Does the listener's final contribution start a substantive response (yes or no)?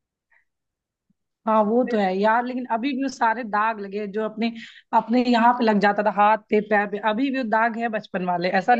yes